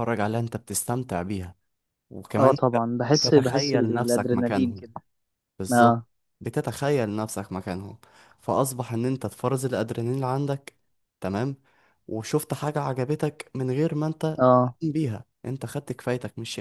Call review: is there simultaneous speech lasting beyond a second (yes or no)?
yes